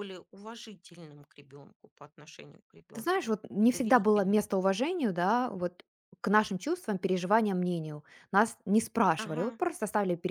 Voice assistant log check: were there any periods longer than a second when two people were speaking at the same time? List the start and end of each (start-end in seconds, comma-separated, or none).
2.9-4.5